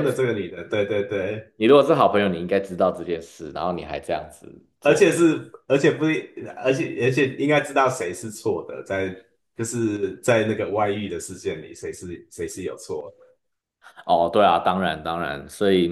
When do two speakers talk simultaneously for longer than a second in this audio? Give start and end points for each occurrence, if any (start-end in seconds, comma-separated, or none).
none